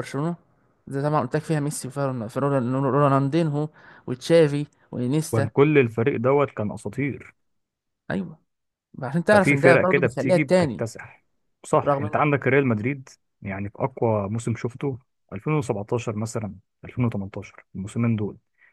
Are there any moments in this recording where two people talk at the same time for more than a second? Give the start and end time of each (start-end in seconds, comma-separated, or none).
9.3-10.8